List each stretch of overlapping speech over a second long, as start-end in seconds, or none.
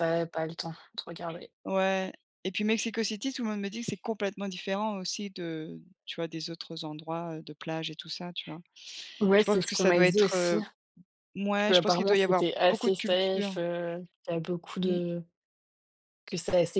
9.3-10.6, 11.7-13.6